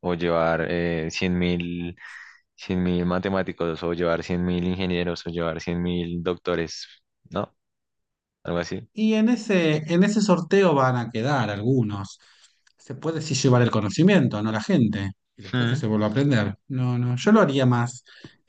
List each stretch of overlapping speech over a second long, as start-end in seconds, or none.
none